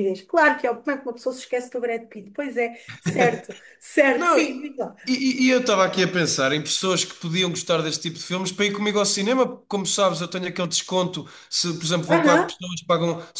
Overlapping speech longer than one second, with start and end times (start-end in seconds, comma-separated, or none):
none